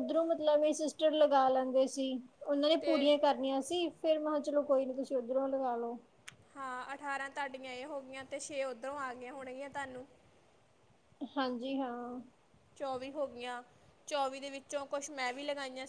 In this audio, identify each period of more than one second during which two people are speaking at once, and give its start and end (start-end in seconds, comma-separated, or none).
none